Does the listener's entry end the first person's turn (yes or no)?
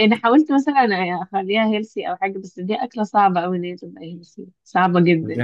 yes